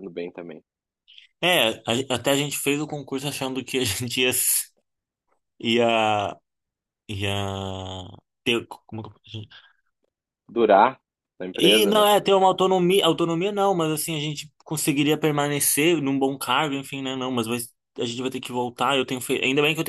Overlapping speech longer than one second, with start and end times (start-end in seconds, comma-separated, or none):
none